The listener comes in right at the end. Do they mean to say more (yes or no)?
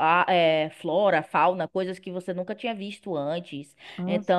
no